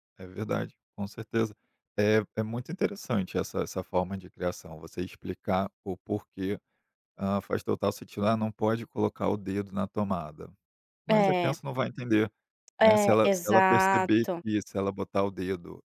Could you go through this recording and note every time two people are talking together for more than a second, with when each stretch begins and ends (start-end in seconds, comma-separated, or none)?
12.8-14.4